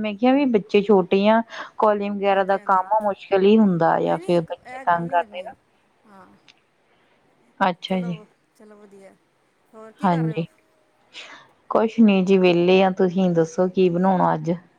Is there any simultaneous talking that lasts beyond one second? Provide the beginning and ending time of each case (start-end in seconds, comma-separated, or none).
4.0-5.5